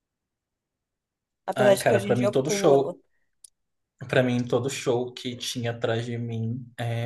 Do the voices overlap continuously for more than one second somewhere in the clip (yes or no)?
yes